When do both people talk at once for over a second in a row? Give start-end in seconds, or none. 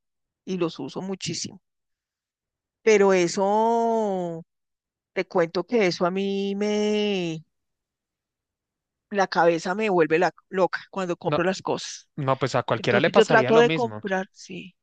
12.8-14.0